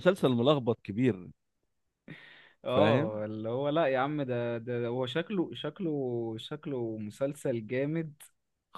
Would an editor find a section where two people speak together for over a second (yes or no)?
no